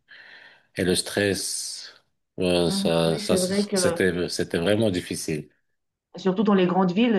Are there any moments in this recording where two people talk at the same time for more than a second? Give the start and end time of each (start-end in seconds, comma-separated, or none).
2.6-4.0